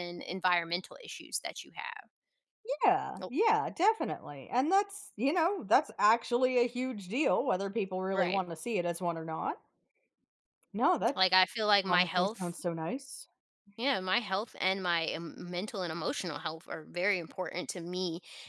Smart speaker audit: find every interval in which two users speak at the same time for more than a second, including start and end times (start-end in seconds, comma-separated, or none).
none